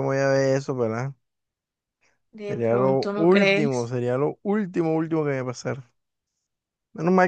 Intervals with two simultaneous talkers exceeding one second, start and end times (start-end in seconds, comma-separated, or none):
2.5-3.9